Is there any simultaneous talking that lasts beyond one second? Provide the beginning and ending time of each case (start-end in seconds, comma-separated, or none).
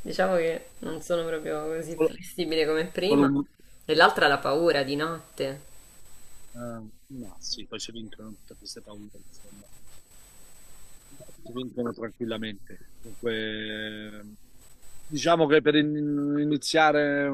none